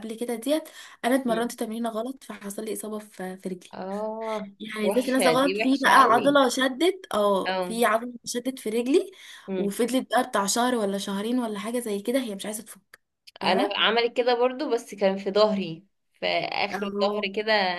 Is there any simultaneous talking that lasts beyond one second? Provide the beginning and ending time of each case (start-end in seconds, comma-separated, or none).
4.6-6.4